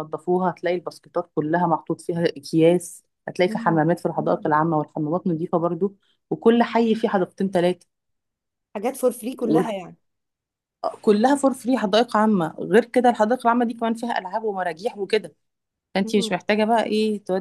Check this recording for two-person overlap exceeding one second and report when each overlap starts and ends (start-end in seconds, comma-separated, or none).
none